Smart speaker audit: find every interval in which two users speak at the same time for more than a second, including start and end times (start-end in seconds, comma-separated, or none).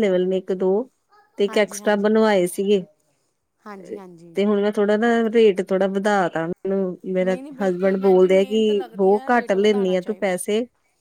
7.2-10.4